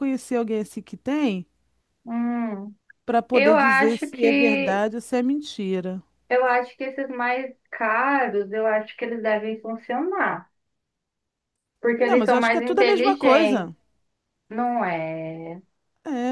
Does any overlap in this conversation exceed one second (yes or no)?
yes